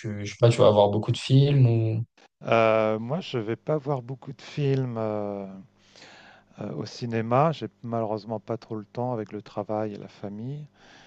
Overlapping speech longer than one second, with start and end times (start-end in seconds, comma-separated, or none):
none